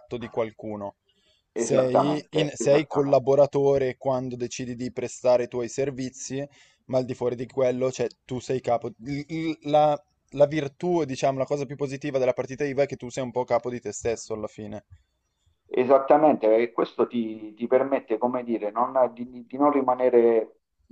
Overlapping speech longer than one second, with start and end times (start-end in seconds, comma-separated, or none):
1.5-3.2